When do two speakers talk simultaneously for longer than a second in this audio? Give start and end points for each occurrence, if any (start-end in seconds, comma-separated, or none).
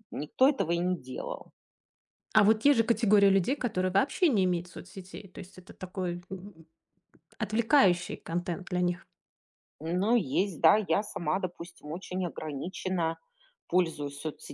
none